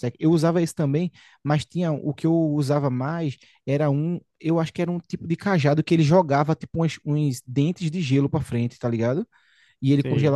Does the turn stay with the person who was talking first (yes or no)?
yes